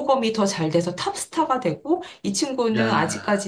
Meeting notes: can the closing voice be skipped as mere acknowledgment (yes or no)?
yes